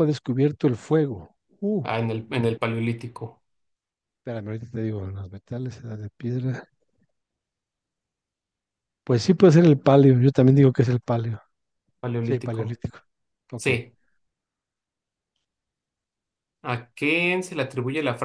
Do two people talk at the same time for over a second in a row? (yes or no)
no